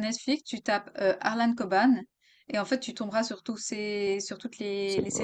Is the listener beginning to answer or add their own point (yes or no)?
yes